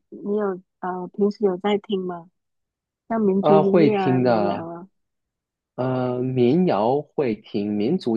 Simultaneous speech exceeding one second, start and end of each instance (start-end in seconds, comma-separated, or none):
3.4-4.7